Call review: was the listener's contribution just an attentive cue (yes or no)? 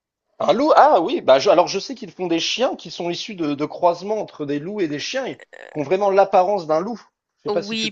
no